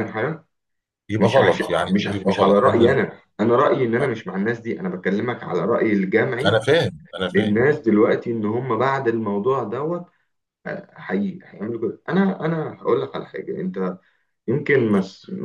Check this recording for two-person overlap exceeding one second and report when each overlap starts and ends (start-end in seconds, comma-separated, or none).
1.2-3.0